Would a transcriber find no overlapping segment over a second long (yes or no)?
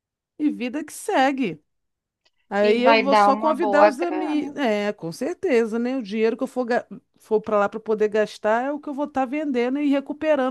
no